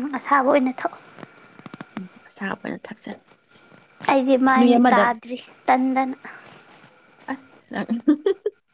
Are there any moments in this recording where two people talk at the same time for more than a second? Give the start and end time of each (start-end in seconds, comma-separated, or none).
none